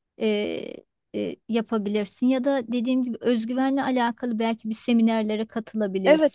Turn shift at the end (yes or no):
yes